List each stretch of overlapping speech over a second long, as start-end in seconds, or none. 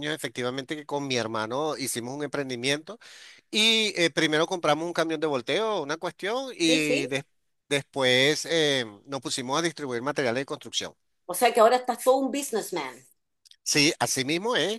none